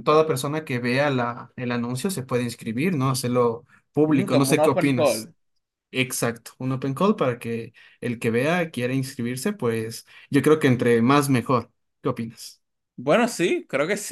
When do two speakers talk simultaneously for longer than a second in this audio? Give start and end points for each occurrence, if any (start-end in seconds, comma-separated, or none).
4.1-5.3